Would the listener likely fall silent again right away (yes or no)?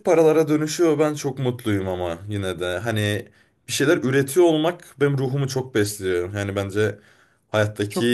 yes